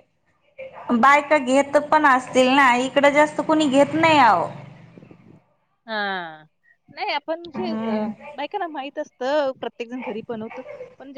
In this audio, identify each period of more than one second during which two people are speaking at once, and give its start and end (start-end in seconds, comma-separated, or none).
none